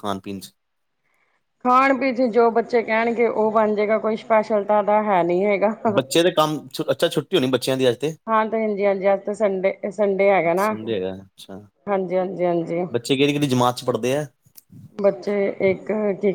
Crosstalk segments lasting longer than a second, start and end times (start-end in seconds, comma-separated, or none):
none